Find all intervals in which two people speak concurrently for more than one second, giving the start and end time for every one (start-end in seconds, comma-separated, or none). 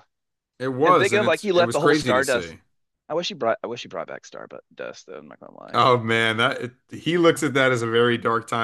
0.8-2.5